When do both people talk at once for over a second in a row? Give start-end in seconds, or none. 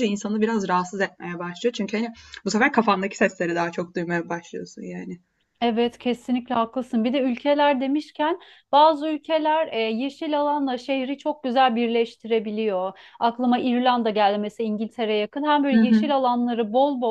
none